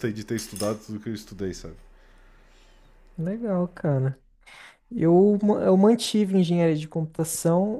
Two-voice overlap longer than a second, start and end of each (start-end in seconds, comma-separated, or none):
none